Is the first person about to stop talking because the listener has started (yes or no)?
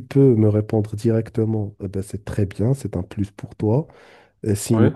no